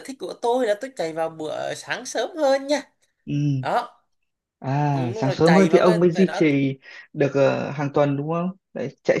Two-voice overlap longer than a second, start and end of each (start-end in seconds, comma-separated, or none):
4.9-6.4